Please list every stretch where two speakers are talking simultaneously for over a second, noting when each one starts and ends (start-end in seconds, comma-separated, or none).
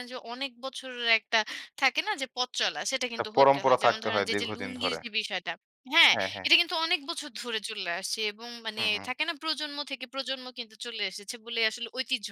3.1-5.0